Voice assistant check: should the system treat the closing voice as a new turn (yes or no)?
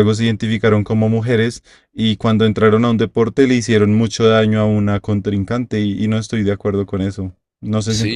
yes